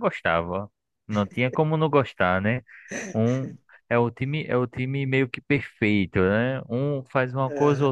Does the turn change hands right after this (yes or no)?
no